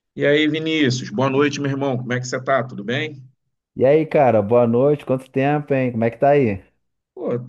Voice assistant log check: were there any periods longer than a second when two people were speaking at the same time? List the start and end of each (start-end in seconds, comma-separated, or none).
none